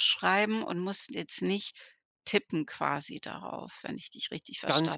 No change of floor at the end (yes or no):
no